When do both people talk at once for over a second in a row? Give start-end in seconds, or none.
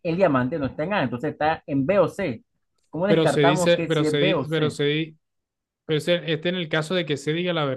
3.1-4.8